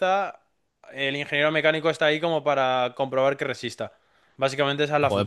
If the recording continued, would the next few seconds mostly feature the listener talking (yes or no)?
yes